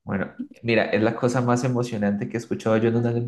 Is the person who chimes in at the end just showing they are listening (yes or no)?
yes